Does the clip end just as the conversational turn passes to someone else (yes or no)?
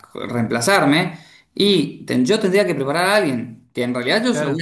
no